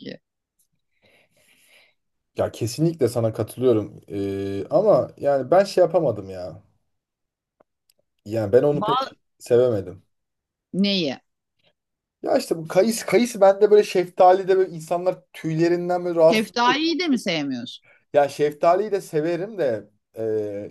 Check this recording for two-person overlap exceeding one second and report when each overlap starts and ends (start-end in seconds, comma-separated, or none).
none